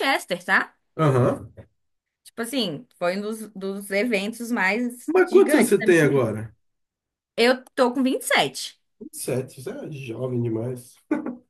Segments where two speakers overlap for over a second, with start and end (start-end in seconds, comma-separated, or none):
5.0-6.3